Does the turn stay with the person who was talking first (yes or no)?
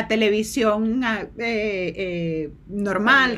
yes